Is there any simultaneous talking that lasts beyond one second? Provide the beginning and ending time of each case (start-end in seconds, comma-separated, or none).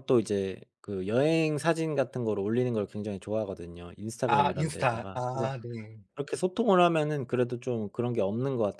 4.3-5.5